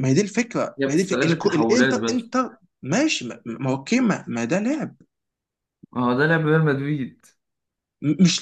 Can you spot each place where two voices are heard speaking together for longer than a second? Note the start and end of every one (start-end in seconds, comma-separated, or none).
0.8-2.3